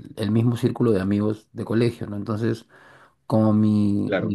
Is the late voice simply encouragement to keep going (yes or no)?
yes